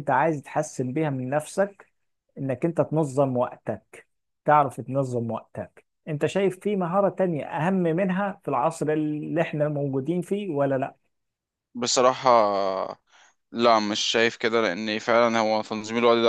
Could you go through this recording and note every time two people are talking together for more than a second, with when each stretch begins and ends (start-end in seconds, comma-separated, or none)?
none